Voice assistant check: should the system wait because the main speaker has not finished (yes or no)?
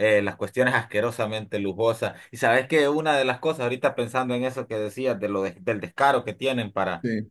yes